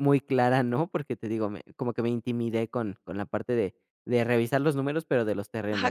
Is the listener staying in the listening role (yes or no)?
no